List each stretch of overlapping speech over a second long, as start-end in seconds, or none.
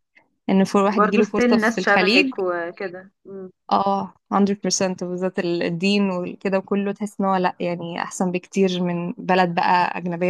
1.0-2.3